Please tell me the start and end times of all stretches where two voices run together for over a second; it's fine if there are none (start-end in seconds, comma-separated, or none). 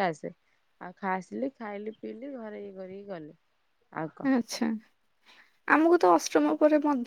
none